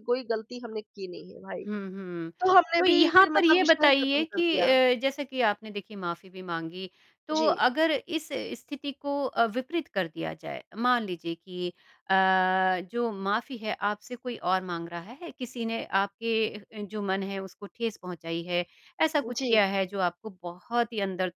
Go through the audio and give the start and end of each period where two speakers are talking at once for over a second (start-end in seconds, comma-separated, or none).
2.8-4.7